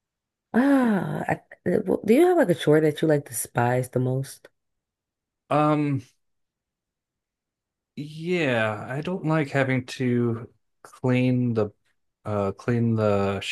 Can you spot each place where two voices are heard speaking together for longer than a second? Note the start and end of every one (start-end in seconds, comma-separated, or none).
none